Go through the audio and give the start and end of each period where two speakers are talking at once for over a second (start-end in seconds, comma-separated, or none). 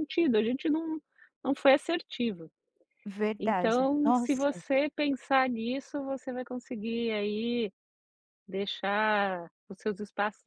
3.4-4.6